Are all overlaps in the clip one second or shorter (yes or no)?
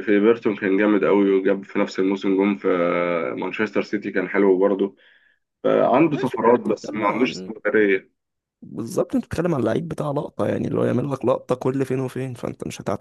no